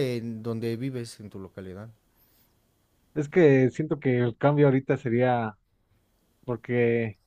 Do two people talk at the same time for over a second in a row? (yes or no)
no